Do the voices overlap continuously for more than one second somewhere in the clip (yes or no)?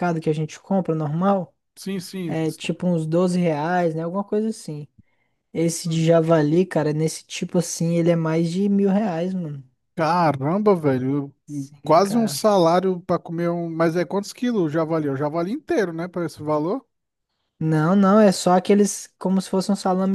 no